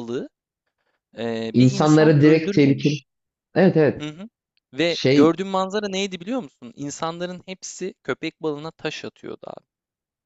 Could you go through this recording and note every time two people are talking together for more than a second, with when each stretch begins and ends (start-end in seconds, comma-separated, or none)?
1.5-3.0